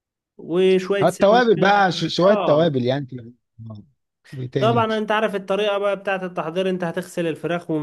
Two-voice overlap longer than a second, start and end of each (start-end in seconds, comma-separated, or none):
none